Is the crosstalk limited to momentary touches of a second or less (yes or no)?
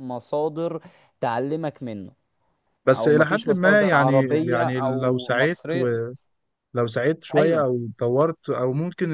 no